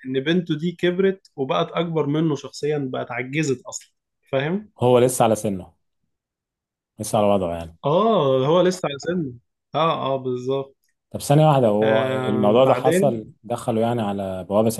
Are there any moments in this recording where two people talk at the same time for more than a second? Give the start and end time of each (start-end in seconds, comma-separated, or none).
11.8-13.1